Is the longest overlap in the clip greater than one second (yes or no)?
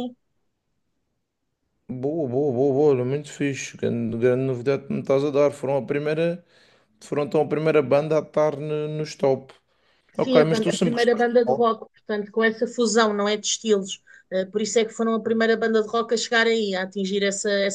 yes